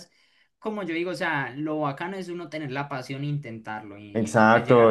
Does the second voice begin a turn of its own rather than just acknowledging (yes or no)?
yes